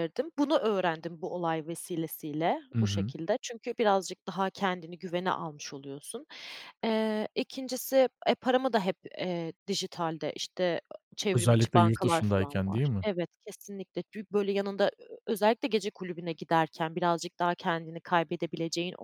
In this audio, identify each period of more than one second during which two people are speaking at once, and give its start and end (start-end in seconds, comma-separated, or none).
11.3-13.1